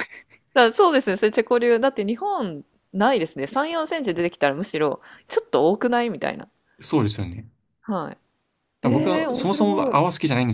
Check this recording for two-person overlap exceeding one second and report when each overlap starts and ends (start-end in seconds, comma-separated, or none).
8.8-10.0